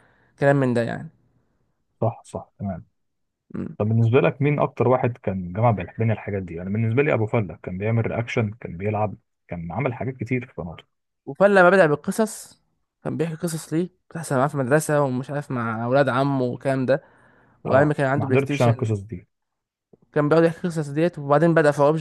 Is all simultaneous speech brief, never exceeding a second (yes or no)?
no